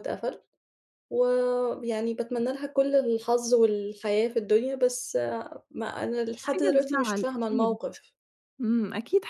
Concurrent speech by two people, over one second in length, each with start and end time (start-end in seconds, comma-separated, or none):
6.4-7.8